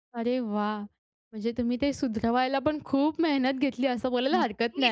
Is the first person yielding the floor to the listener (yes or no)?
yes